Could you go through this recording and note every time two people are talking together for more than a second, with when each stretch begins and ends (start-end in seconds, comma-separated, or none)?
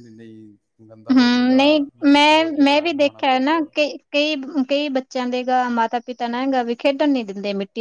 1.1-3.6